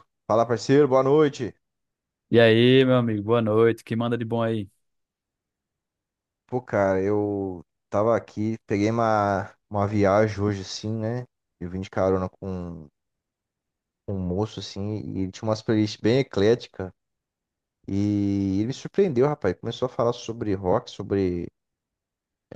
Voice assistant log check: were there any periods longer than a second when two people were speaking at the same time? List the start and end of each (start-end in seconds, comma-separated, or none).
none